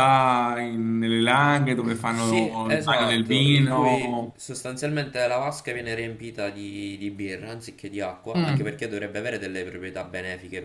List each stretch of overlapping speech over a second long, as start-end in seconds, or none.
2.1-4.4